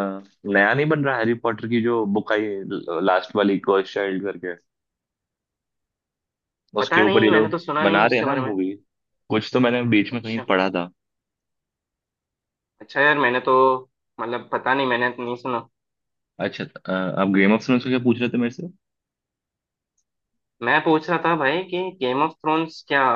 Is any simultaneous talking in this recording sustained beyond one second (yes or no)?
yes